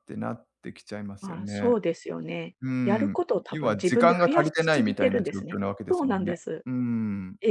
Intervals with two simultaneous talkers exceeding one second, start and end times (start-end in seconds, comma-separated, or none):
2.6-6.7